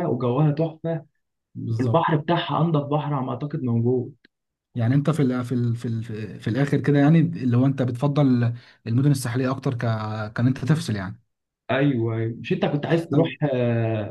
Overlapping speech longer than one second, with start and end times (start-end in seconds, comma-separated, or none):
none